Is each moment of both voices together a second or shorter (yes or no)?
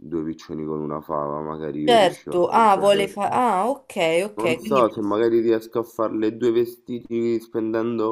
no